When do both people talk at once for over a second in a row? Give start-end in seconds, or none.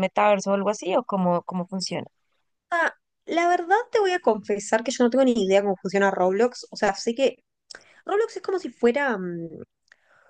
none